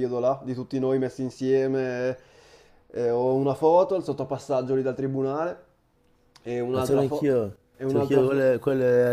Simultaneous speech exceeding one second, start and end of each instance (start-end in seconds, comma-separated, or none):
6.7-8.5